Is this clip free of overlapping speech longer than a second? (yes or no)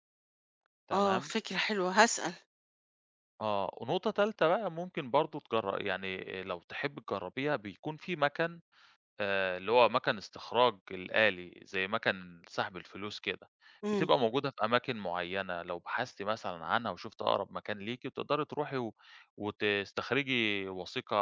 yes